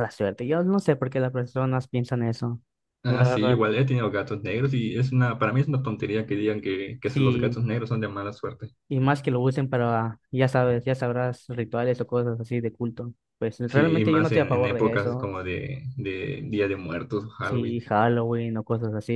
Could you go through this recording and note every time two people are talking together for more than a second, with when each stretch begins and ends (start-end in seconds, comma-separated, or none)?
13.7-15.3